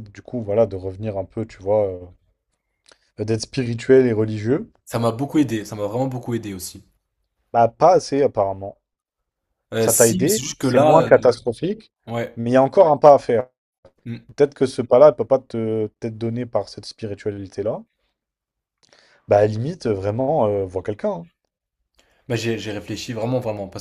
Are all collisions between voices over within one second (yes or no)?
no